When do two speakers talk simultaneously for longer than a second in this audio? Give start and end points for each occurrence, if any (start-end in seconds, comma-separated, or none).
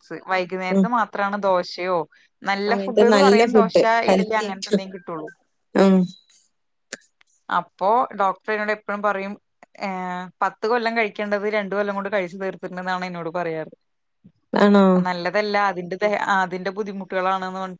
2.7-4.8